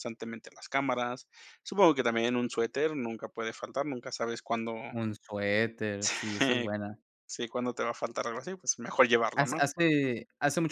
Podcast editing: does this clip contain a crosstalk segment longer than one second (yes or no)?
no